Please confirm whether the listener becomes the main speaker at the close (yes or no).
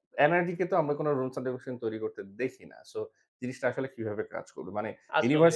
no